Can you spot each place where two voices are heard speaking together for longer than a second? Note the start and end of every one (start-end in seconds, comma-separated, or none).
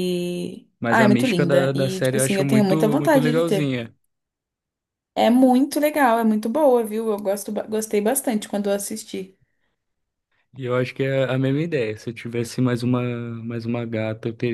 0.8-3.8